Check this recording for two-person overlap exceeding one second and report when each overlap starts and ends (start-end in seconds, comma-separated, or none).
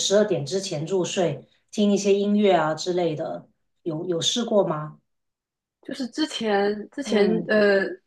none